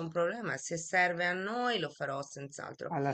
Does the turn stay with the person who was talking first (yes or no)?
yes